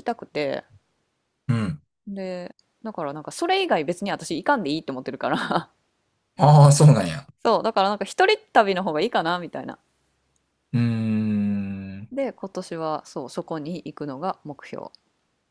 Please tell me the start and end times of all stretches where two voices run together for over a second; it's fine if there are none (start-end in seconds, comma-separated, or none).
none